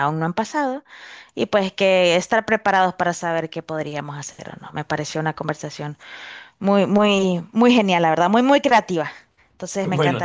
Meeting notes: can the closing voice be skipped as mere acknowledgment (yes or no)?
yes